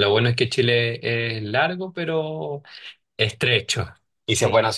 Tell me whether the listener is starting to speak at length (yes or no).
no